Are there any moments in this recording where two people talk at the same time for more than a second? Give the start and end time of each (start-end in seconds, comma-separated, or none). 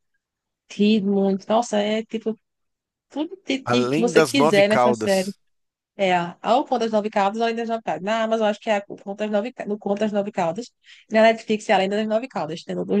3.6-5.3